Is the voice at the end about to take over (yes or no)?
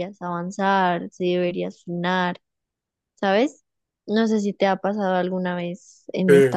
no